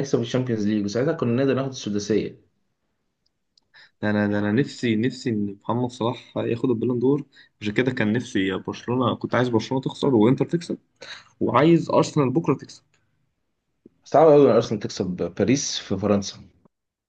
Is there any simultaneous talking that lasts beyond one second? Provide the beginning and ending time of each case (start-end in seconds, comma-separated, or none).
none